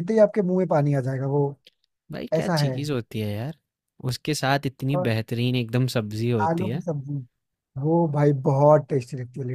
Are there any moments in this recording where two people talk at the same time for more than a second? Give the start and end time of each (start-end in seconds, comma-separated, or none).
none